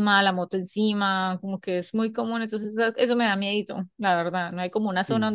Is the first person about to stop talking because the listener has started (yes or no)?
no